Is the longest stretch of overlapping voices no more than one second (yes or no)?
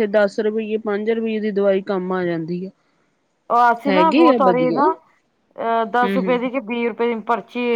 yes